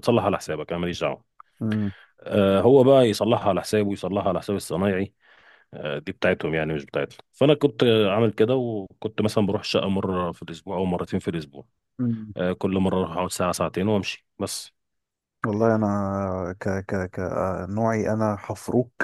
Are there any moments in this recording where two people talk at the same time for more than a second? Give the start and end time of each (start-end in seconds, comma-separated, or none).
none